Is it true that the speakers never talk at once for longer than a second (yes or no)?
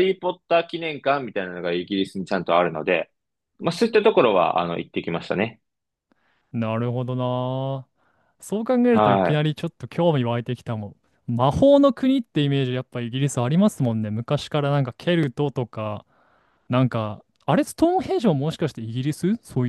yes